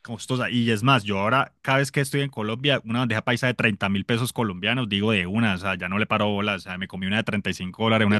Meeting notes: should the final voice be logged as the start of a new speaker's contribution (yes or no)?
yes